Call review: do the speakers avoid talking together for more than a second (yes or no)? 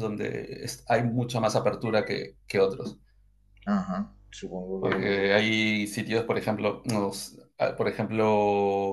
yes